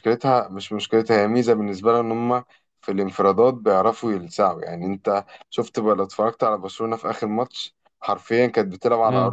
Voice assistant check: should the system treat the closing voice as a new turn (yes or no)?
no